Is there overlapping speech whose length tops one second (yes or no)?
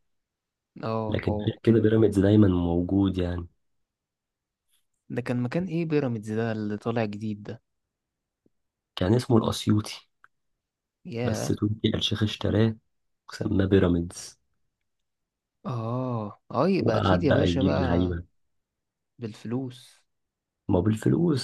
yes